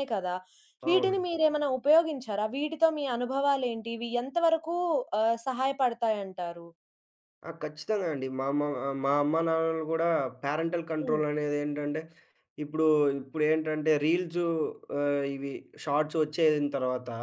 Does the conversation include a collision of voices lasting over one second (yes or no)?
no